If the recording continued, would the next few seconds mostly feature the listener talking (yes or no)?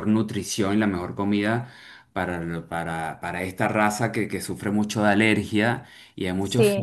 no